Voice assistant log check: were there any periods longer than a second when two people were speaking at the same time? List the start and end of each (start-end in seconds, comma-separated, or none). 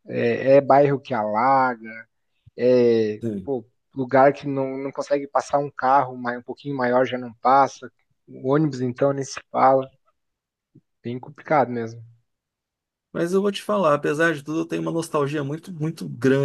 none